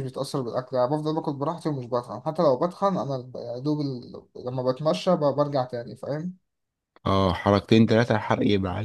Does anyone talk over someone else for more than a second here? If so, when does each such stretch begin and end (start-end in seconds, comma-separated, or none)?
none